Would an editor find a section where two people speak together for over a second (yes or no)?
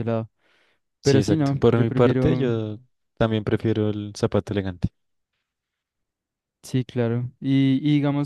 yes